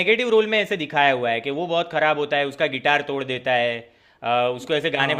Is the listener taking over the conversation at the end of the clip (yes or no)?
no